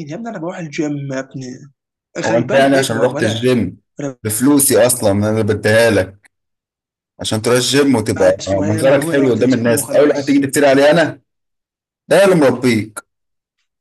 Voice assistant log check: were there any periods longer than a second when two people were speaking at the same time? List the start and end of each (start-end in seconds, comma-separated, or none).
2.3-3.5, 8.4-10.5